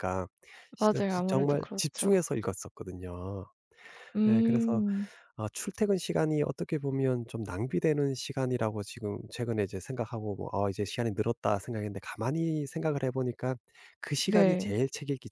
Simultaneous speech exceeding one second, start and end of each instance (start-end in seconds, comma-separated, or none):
0.8-2.1